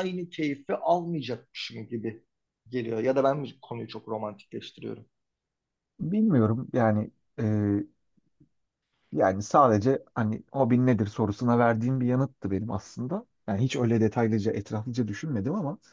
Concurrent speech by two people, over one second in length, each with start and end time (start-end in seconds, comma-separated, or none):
none